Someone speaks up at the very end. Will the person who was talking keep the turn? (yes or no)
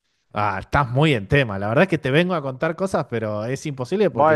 no